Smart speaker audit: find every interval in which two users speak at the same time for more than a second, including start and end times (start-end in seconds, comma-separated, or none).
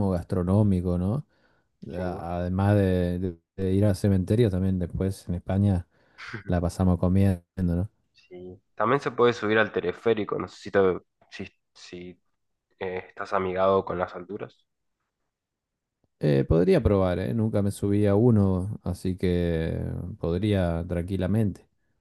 none